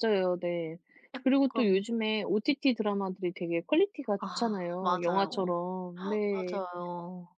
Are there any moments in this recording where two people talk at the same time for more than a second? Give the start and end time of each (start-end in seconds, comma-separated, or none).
4.2-5.6